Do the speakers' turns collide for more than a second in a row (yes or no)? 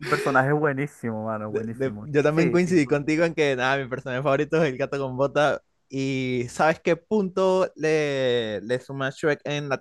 yes